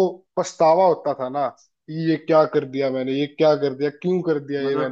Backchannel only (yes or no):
no